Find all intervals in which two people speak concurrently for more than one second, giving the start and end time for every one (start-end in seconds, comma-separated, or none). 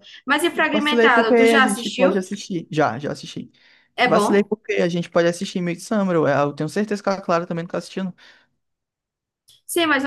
0.7-2.2